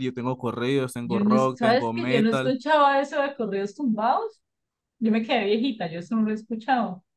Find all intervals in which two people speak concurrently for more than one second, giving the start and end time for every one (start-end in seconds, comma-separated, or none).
1.0-2.5